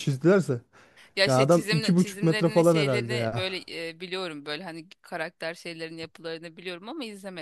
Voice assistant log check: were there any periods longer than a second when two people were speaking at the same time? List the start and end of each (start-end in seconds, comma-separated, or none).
1.2-3.5